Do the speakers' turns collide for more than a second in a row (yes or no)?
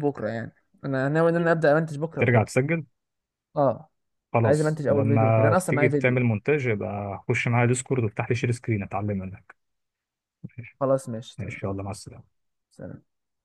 yes